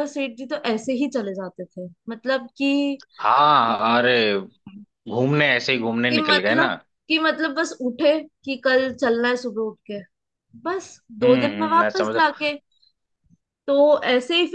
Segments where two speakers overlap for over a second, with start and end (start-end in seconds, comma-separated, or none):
11.2-12.5